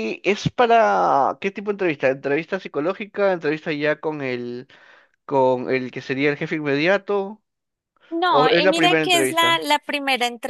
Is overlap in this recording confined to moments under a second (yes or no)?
no